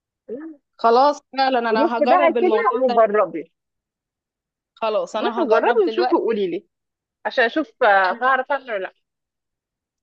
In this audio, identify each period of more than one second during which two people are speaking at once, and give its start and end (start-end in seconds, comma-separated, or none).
1.7-3.0, 5.2-6.4